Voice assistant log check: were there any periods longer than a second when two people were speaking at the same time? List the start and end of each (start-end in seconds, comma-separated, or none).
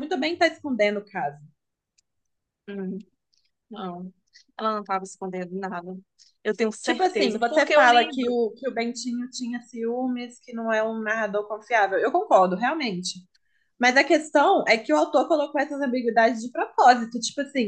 6.8-8.4